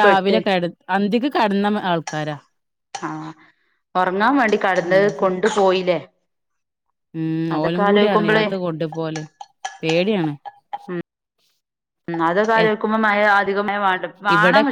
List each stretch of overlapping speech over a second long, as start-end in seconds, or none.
none